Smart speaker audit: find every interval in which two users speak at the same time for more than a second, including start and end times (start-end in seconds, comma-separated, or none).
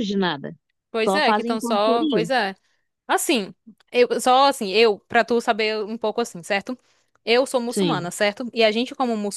1.1-2.2